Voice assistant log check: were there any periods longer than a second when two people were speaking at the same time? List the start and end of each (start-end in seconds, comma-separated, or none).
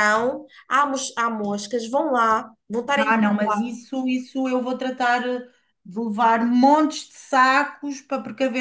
none